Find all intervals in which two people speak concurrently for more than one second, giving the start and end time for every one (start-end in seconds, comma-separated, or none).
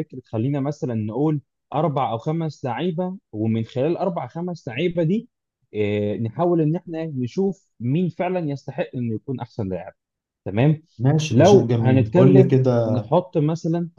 11.3-13.0